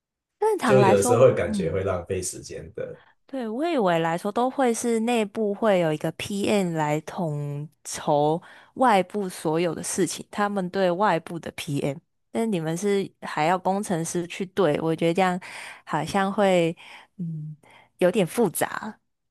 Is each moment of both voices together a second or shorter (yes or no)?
no